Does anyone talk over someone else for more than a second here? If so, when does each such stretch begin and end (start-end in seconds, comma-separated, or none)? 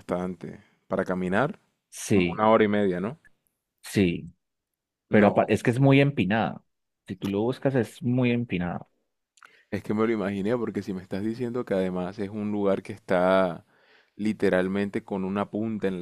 none